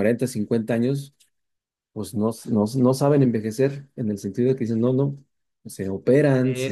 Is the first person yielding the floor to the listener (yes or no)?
yes